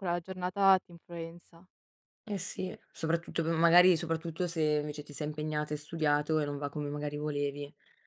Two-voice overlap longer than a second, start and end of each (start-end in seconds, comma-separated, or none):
none